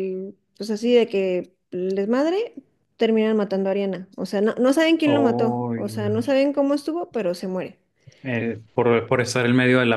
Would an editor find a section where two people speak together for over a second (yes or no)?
yes